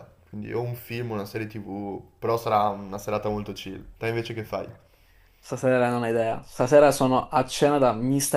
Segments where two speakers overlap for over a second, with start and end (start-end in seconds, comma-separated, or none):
none